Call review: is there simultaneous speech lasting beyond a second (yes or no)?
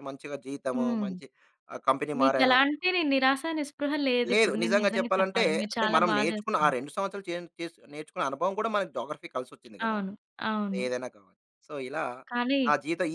yes